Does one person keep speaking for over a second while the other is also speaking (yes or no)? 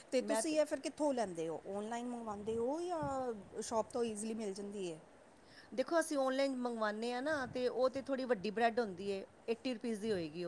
no